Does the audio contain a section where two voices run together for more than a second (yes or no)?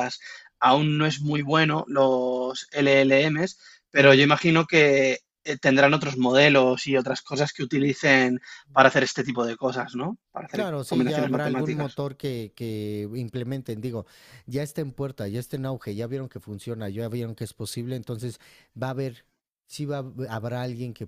yes